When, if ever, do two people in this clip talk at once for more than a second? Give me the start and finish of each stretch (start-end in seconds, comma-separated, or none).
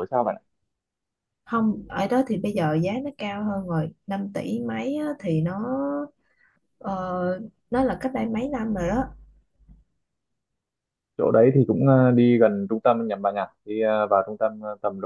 none